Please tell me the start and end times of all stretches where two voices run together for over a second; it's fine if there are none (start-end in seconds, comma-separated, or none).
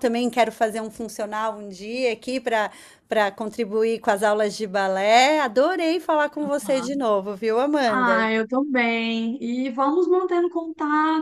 none